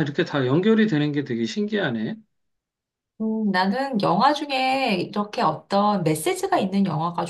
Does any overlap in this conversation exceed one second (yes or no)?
no